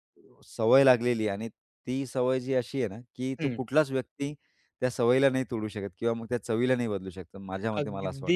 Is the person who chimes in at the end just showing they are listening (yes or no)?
no